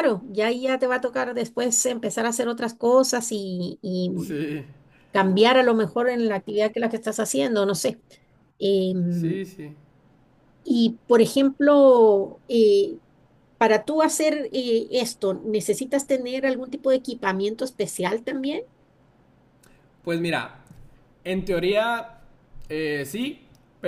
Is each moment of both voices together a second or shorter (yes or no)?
yes